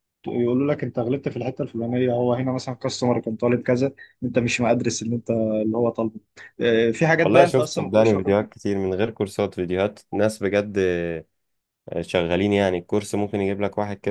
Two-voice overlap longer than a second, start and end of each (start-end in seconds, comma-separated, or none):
7.2-8.5